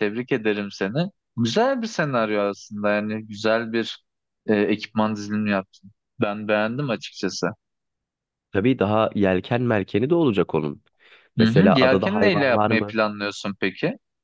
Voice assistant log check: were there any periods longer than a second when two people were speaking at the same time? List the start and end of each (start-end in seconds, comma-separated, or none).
11.4-13.0